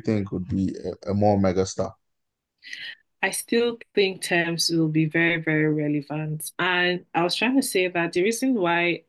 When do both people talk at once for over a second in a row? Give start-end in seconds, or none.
none